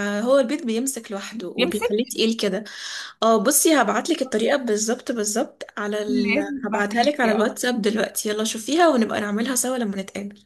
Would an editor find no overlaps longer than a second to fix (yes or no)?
no